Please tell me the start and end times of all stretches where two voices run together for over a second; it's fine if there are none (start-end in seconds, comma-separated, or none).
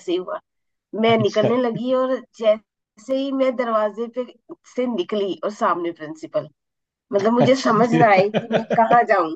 7.4-8.8